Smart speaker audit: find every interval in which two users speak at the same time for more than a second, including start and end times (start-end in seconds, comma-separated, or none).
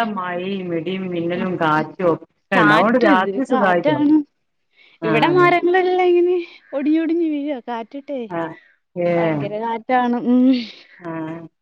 2.5-4.2